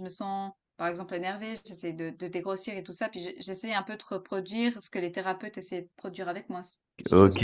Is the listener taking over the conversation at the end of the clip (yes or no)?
yes